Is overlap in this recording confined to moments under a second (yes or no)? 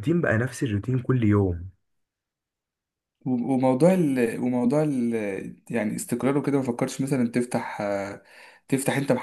yes